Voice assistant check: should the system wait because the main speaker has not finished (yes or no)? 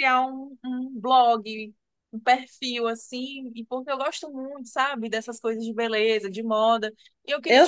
no